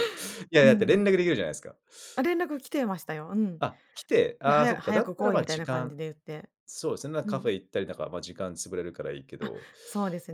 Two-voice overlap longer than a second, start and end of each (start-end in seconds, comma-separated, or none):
4.4-6.0